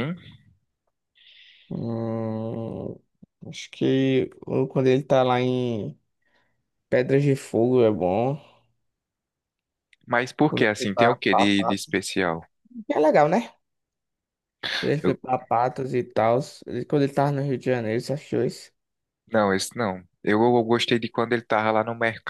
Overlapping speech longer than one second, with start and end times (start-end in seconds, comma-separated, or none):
10.5-12.0